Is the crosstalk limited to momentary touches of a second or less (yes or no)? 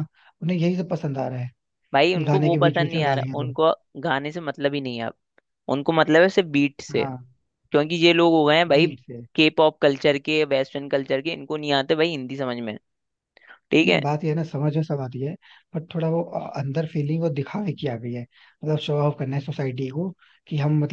no